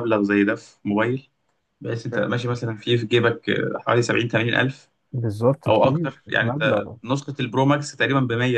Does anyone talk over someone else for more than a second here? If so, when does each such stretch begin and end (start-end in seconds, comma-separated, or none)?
5.7-7.0